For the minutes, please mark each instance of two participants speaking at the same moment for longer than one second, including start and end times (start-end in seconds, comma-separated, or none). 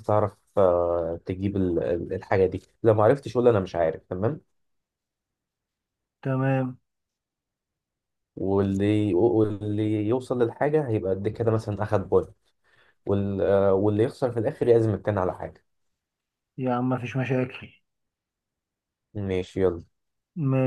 none